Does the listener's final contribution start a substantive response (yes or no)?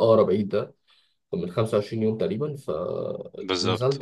no